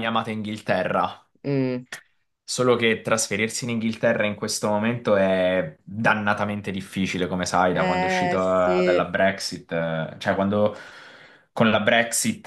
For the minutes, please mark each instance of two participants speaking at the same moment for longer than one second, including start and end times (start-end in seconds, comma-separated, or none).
7.7-9.1